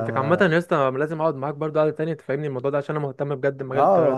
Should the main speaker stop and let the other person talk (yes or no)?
yes